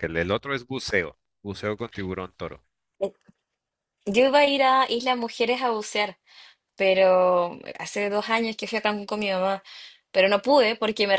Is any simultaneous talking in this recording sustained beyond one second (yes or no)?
no